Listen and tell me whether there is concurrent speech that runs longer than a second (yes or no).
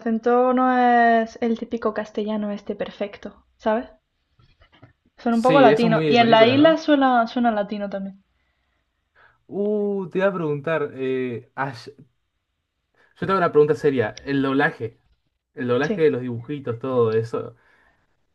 yes